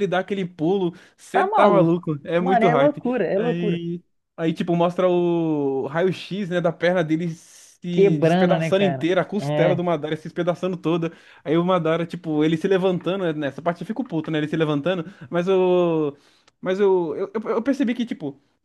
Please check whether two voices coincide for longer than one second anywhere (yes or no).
yes